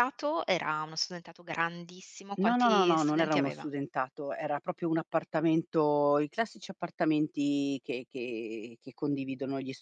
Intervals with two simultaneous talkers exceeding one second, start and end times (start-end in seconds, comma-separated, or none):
2.4-3.7